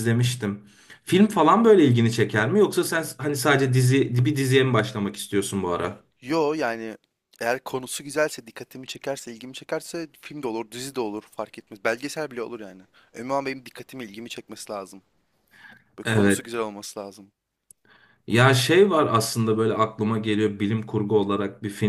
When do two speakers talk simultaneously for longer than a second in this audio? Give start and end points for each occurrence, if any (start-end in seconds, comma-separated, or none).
none